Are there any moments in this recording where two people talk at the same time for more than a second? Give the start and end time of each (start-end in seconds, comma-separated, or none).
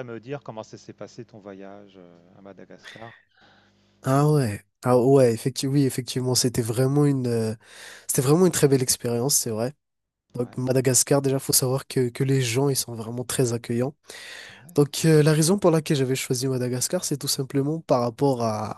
none